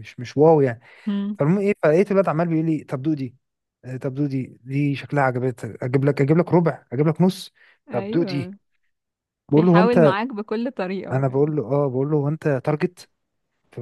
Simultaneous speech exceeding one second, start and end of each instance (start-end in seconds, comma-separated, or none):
none